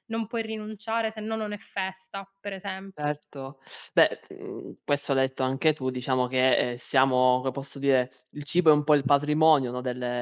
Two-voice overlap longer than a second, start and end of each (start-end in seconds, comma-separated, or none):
none